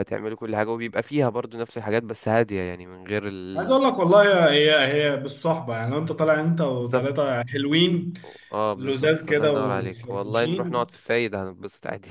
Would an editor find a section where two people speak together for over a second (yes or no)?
yes